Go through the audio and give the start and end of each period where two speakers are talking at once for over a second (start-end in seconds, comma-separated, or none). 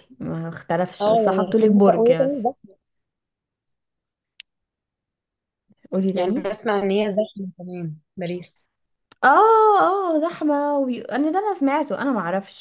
1.0-2.5